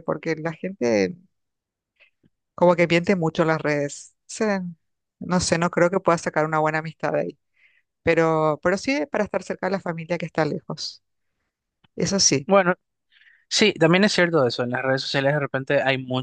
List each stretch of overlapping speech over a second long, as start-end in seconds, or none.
none